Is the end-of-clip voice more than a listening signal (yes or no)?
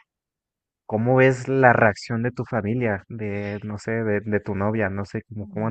yes